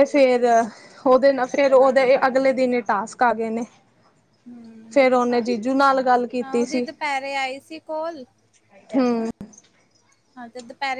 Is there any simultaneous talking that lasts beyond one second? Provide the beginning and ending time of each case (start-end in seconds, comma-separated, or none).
none